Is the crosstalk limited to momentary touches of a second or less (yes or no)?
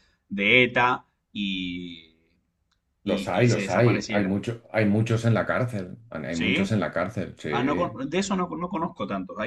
no